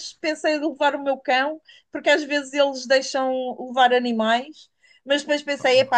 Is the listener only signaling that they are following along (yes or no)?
yes